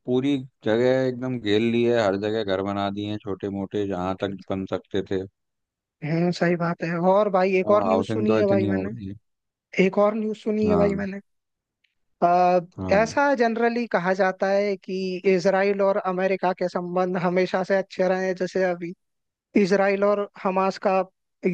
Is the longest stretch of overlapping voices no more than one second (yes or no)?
no